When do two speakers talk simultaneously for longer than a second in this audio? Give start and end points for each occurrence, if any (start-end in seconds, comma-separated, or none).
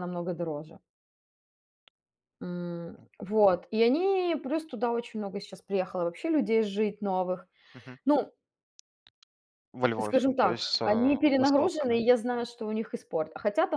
10.0-12.0